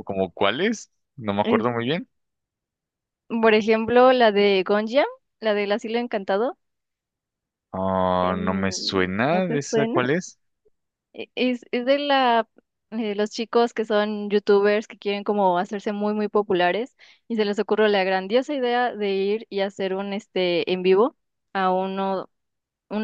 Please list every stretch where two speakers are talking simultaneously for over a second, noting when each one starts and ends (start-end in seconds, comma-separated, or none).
8.2-10.0